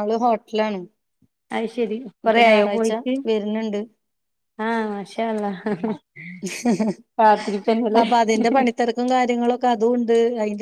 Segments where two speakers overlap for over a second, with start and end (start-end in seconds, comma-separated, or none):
none